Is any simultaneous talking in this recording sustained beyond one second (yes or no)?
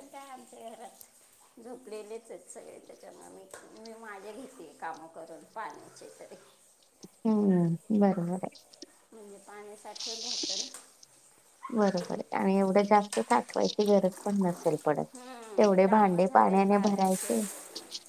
yes